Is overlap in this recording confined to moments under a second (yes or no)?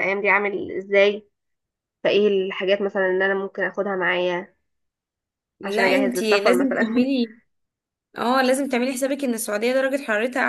no